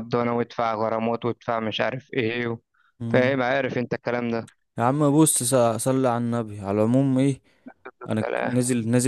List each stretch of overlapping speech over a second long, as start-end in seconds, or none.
none